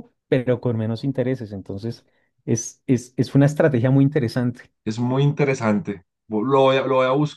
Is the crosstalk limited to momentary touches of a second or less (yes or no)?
yes